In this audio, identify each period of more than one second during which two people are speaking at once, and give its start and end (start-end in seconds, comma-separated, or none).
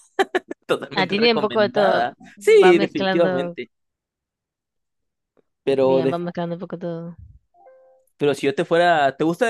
0.9-3.6